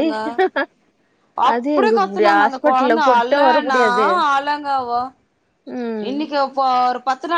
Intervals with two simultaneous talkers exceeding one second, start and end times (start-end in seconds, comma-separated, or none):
1.5-3.8